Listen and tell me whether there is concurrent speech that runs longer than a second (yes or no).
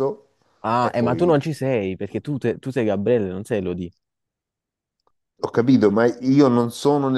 no